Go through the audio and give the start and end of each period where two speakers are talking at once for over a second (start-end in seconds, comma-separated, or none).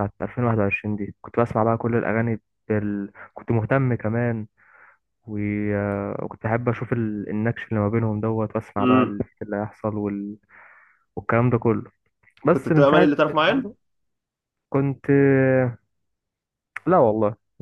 12.5-13.7